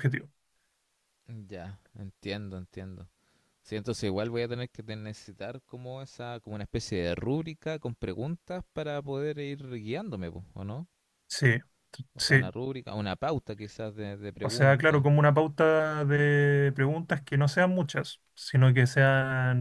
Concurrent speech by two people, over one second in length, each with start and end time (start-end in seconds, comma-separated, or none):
none